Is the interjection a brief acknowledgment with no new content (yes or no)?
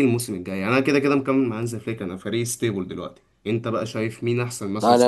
no